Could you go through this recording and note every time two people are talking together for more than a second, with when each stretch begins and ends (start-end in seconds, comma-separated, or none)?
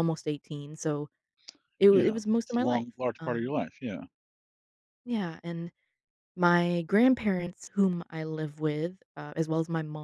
1.9-3.5